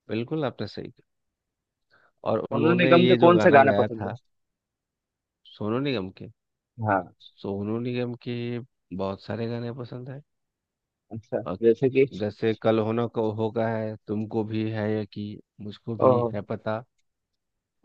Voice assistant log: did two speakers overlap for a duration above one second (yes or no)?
yes